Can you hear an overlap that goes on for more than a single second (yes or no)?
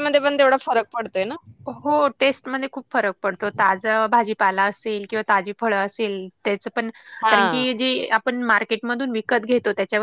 no